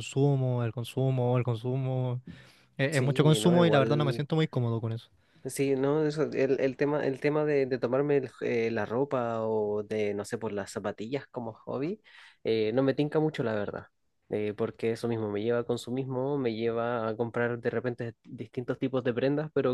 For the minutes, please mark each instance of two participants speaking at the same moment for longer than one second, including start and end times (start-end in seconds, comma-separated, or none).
2.9-4.2